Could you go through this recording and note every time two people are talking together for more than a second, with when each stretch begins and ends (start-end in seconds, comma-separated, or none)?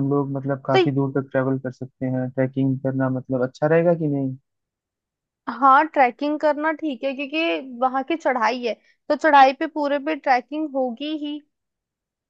none